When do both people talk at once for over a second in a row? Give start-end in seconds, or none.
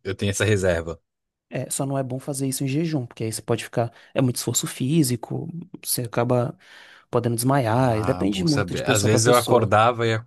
7.7-9.7